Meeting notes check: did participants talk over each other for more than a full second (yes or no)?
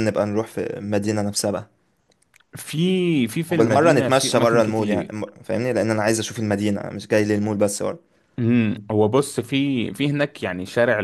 yes